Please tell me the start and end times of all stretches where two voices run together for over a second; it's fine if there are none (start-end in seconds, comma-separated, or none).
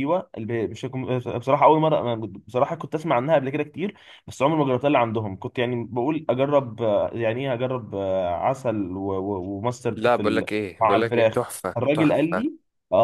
9.9-12.5